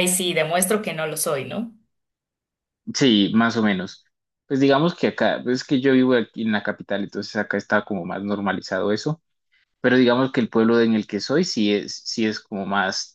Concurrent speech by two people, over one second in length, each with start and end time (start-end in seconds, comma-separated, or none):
none